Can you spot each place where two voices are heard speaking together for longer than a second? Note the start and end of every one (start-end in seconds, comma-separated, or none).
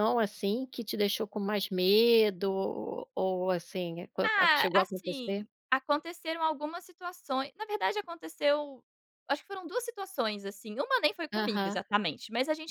4.2-5.5